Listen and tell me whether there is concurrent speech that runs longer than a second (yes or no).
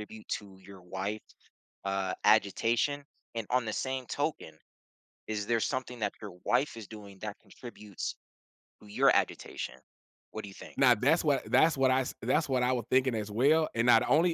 no